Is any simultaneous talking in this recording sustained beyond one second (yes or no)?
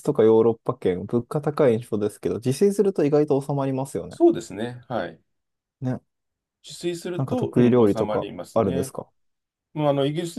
yes